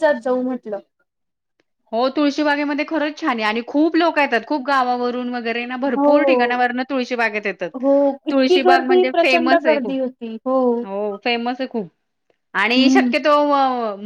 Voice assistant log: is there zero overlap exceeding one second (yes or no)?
no